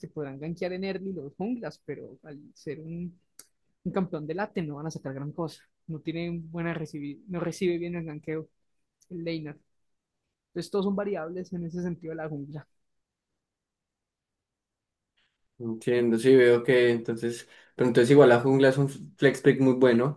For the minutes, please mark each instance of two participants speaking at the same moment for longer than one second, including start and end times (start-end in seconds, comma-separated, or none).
none